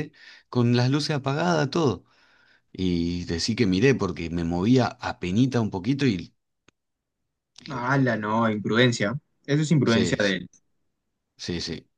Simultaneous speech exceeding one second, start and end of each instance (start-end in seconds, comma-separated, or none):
none